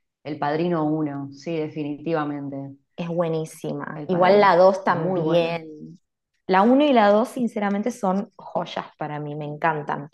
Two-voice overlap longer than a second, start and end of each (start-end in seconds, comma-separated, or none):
3.9-5.6